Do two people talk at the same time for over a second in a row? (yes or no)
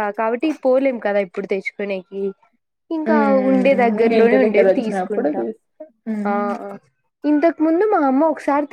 yes